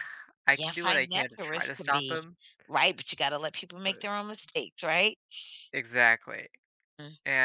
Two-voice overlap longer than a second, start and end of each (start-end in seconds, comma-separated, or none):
0.5-2.2